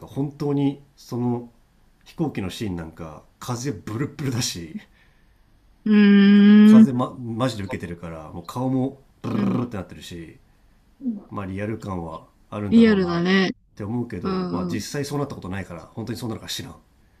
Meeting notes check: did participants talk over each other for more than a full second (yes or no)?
no